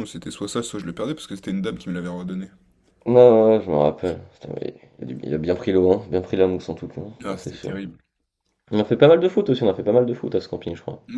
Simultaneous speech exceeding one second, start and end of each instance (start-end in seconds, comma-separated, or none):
none